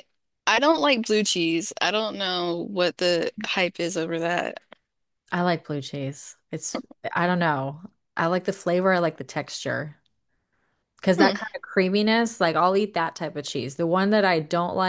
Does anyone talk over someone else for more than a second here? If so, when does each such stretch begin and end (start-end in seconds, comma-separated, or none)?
none